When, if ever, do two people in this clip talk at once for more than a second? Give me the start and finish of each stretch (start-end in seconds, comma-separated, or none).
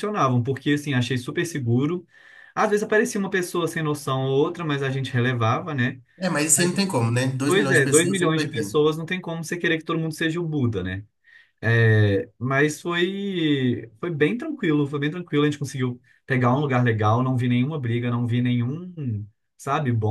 7.5-8.8